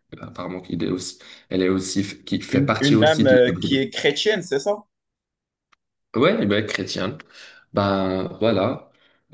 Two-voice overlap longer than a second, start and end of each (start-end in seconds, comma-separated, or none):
2.5-3.8